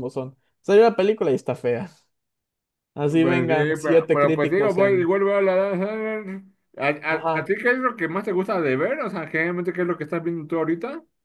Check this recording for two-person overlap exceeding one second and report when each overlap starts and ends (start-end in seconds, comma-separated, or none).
3.2-5.1